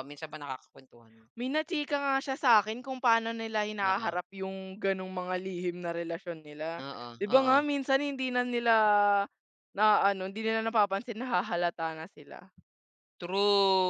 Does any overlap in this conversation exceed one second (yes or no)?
no